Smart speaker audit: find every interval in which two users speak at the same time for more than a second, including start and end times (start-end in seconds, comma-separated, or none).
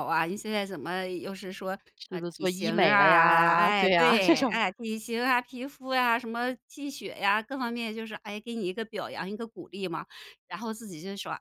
2.1-4.6